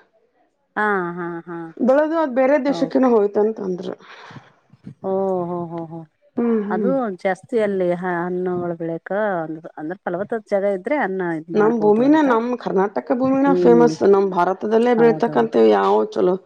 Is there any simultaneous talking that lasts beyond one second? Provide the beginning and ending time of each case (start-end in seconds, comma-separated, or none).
none